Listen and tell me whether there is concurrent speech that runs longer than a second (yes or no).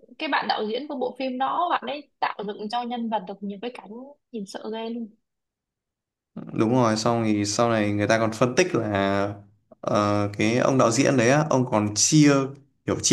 no